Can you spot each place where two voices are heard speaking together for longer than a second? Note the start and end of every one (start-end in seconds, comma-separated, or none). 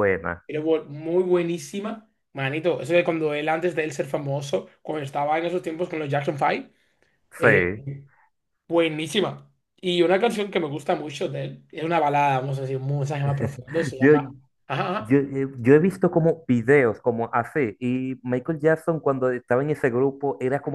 none